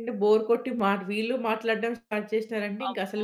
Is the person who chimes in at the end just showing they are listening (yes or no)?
no